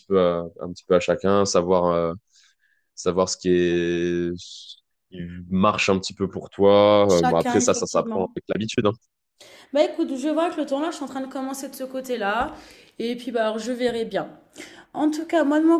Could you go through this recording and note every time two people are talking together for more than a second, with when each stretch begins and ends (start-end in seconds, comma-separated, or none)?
7.1-8.4